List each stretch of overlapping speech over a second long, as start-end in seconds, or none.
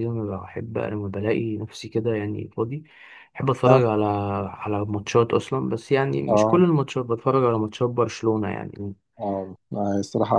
none